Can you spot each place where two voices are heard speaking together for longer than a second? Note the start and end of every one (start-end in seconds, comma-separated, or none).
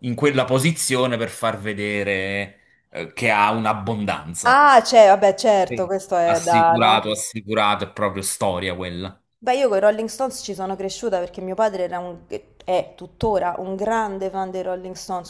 5.7-7.1